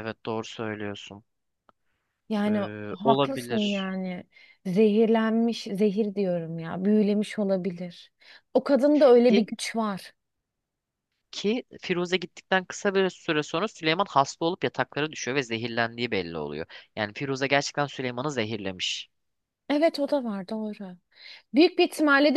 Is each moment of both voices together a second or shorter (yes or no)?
no